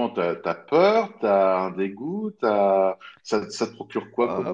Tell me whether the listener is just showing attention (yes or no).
no